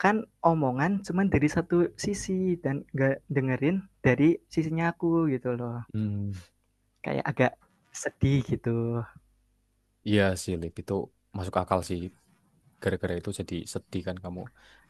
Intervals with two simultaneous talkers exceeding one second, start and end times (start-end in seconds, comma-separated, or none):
none